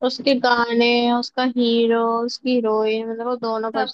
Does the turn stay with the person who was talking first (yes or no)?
no